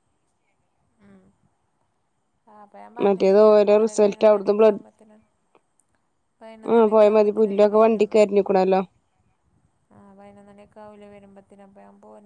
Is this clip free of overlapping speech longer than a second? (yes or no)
no